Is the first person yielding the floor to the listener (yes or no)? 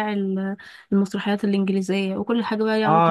yes